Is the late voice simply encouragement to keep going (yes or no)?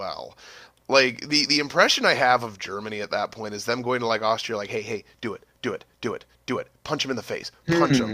no